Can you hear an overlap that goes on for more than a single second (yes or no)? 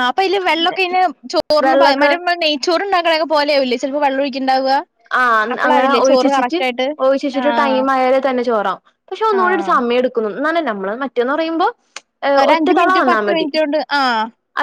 no